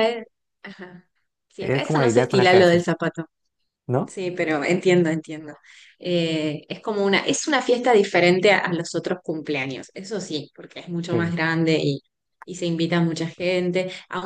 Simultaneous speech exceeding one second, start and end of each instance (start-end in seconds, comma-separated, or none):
1.6-2.8